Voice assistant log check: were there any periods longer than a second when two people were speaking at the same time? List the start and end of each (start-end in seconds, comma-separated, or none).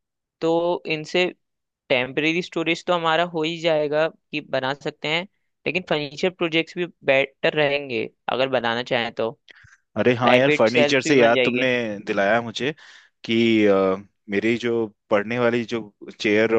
10.2-11.7